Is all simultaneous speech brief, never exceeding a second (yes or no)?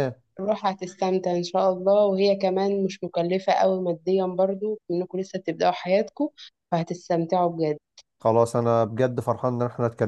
yes